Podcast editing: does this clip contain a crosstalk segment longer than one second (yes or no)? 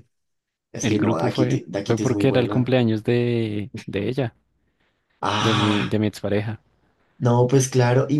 yes